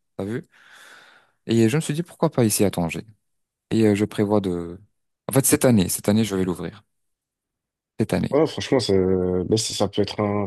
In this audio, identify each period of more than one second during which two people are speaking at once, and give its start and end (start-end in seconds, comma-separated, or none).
none